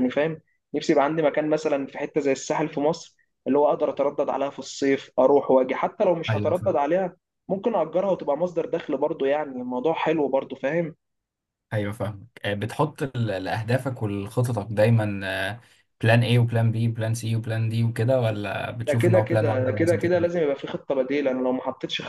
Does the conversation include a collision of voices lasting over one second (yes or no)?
yes